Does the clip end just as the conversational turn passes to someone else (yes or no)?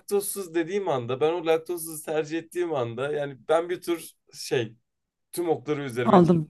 yes